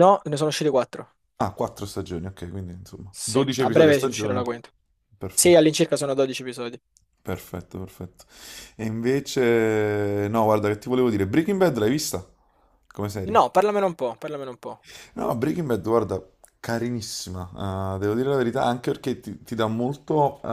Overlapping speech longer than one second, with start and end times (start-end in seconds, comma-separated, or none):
3.1-4.4